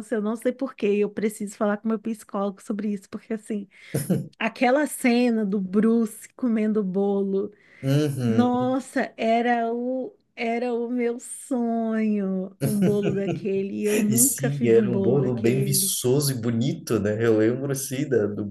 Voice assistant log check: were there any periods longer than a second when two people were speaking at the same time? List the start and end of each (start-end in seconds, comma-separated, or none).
14.1-16.0